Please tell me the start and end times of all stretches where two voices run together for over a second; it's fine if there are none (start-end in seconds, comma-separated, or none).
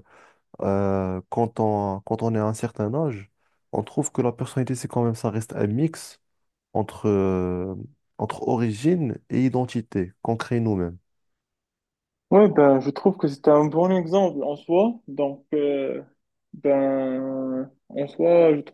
none